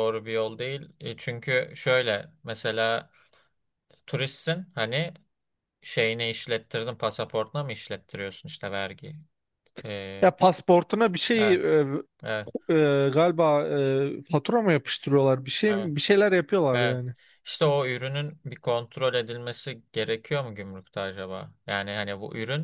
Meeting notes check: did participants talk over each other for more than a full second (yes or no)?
no